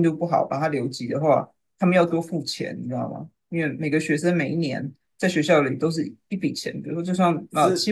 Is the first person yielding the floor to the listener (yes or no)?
yes